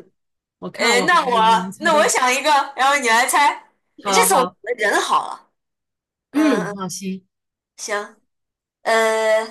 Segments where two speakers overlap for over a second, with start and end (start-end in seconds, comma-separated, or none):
0.7-2.1